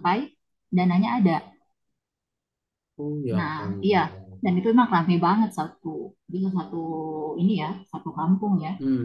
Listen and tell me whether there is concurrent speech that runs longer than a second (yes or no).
no